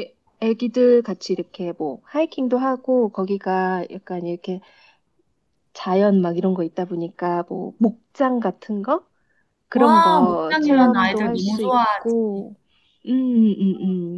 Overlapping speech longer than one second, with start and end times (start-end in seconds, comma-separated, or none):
9.7-12.2